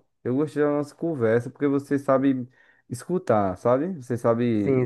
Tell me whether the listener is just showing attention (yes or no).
no